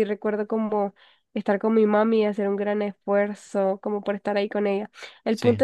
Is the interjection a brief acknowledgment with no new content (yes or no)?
yes